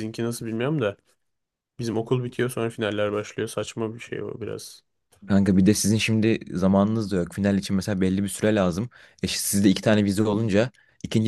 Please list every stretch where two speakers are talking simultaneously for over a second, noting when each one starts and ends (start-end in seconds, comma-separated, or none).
none